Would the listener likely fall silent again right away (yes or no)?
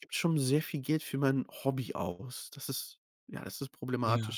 no